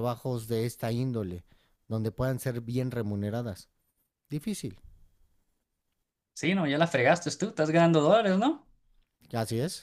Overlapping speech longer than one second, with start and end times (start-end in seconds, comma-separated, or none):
none